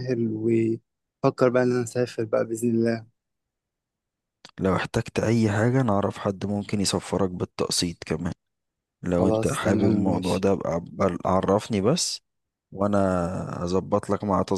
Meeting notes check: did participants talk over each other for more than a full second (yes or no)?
yes